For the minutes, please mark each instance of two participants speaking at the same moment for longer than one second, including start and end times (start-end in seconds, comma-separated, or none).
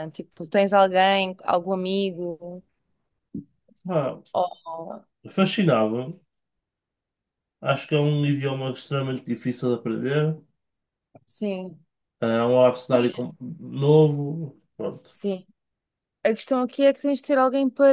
none